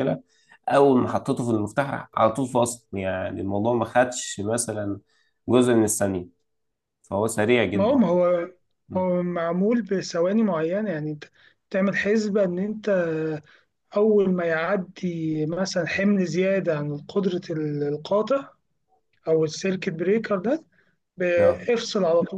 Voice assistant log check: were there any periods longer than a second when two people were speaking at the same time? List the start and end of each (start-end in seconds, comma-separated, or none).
none